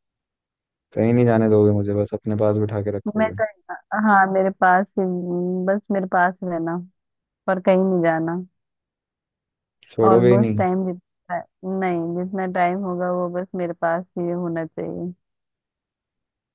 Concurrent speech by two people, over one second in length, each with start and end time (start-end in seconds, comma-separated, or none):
none